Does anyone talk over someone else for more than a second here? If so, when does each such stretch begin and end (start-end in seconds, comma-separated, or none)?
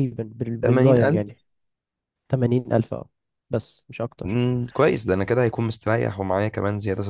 none